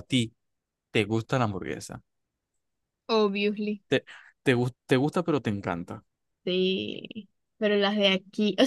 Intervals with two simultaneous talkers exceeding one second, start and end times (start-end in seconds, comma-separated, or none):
none